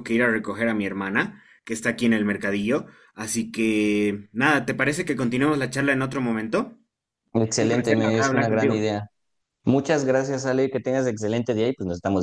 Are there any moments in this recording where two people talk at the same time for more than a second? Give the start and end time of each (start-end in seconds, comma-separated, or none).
7.6-8.8